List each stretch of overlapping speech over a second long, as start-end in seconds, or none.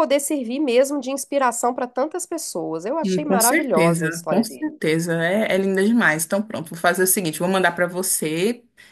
3.0-4.7